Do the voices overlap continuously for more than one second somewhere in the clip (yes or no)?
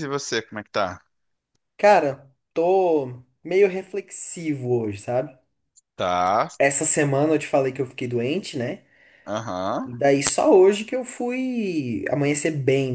no